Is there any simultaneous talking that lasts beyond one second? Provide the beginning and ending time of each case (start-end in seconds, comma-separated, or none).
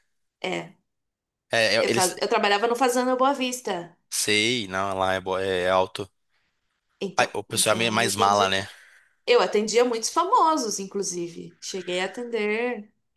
7.2-8.6